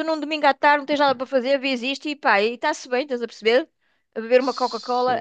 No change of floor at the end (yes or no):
no